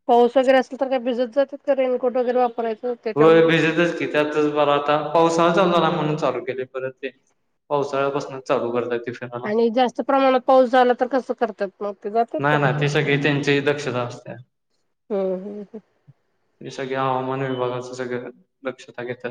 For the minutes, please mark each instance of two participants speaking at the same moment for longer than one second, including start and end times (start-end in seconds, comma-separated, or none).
none